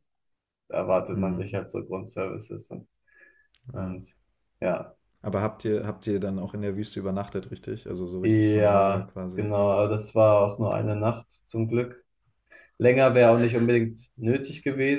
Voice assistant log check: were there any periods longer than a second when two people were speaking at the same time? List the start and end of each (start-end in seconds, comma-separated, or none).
8.2-9.5